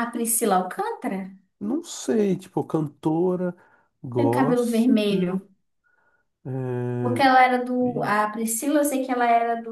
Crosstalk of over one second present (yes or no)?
yes